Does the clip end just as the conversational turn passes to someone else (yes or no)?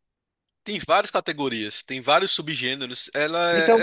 yes